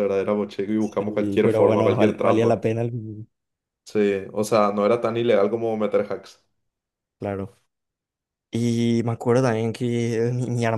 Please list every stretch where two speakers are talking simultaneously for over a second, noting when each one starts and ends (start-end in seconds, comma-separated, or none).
0.8-2.6